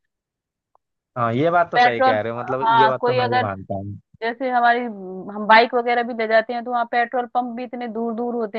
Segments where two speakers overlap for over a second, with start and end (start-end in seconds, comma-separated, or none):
1.7-3.5